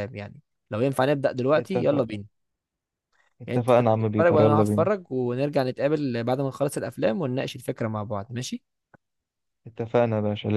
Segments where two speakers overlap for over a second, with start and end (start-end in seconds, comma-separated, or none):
3.5-4.8